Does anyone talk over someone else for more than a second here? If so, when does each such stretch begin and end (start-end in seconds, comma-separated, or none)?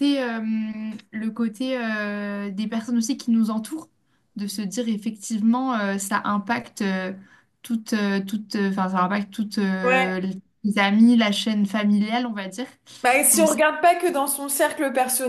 none